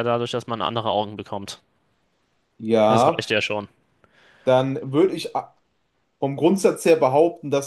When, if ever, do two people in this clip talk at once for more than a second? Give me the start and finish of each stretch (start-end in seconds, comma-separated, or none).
none